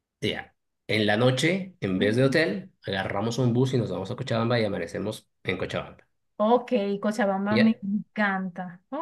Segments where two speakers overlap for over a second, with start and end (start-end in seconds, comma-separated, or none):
none